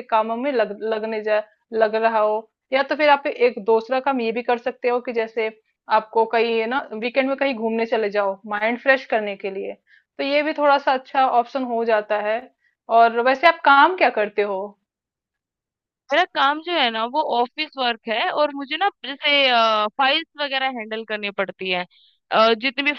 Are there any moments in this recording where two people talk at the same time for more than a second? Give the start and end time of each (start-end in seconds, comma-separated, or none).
none